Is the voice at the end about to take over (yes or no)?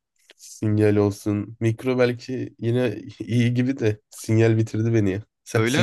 yes